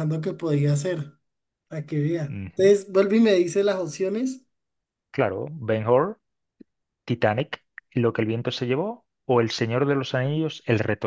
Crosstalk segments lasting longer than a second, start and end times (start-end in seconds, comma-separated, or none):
none